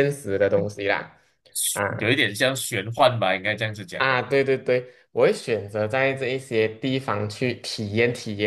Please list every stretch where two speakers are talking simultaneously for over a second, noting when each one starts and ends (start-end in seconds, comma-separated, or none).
none